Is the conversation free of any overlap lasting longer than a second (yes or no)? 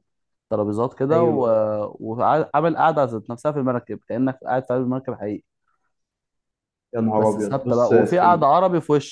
no